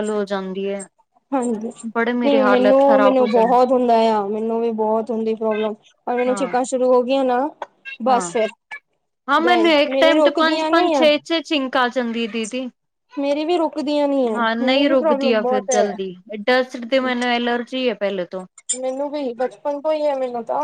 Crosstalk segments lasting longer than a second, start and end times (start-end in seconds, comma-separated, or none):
2.2-3.5, 9.4-11.1, 14.3-15.9